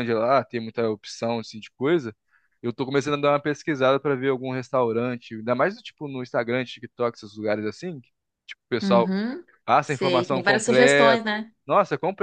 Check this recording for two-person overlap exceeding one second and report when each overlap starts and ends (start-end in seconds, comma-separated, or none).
9.8-11.2